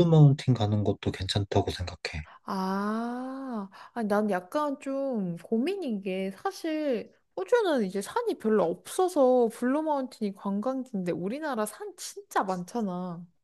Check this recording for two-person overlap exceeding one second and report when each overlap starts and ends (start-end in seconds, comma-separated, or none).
none